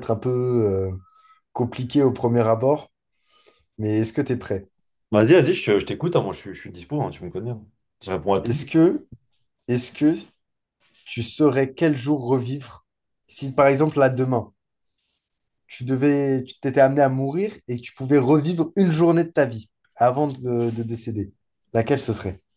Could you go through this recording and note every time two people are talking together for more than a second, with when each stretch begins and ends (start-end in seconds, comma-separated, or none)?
none